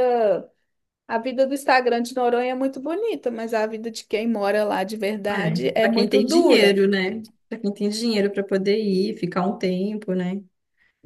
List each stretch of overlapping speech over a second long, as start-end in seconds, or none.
5.3-6.8